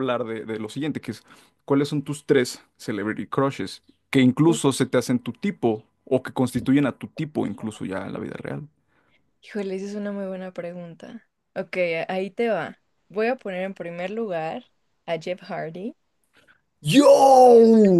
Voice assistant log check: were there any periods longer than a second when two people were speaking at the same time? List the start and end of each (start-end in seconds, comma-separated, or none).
none